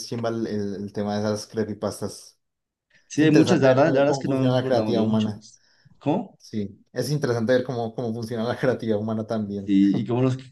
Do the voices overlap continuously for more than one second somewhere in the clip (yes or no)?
yes